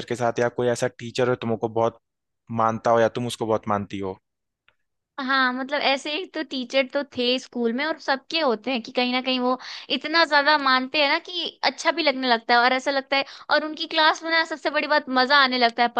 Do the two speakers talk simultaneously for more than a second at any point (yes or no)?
no